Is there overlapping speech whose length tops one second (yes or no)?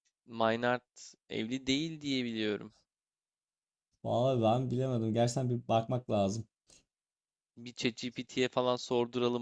no